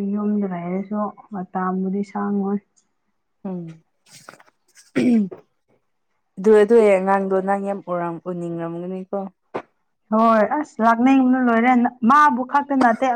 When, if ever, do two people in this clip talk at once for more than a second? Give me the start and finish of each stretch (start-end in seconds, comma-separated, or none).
none